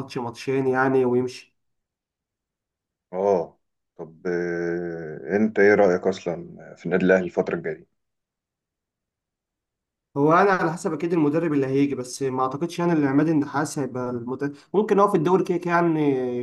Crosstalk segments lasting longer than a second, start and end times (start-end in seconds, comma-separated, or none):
none